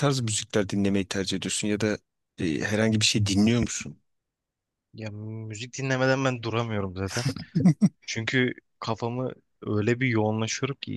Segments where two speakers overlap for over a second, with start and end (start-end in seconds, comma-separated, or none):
none